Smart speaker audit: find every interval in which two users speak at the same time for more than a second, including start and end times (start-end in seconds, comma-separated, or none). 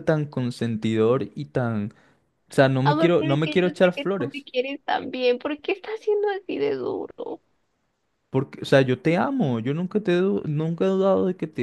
2.8-4.4